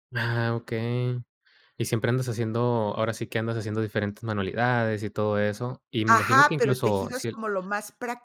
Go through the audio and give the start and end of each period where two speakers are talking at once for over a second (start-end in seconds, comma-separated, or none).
6.1-7.4